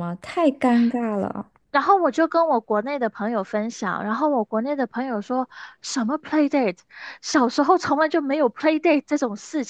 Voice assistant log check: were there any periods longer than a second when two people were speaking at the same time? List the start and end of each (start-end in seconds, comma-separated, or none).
none